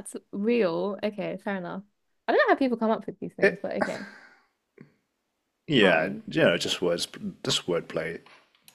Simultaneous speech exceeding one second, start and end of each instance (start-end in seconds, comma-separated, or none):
none